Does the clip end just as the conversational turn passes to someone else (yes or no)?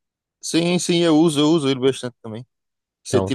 no